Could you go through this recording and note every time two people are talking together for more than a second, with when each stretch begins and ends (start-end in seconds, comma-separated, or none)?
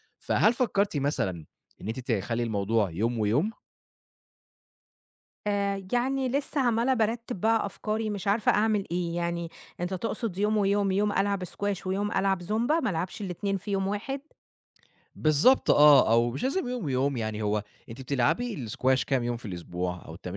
none